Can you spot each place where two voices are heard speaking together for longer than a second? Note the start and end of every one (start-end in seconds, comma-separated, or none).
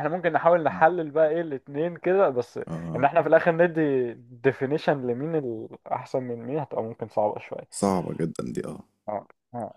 none